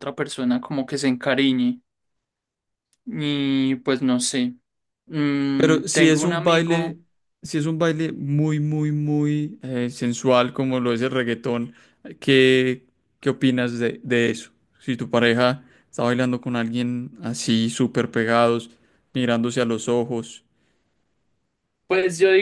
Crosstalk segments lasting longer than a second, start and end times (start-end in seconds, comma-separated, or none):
5.6-7.0